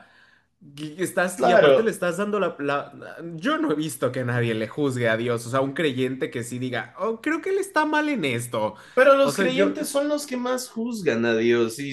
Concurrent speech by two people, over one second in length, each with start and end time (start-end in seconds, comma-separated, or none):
none